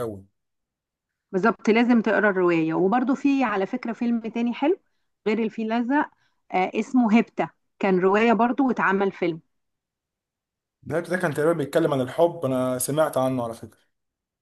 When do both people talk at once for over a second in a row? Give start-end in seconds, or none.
none